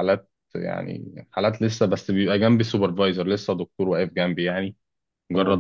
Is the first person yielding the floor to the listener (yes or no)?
no